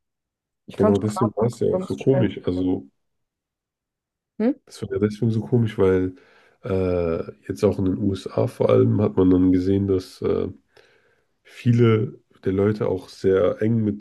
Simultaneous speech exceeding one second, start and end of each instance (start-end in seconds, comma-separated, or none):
0.8-2.4